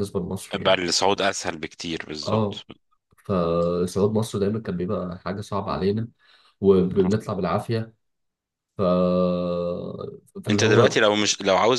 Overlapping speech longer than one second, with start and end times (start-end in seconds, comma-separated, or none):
none